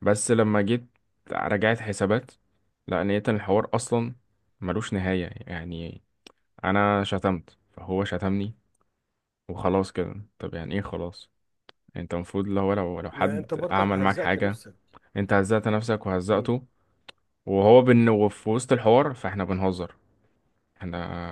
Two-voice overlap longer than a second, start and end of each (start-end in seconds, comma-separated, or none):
13.1-14.6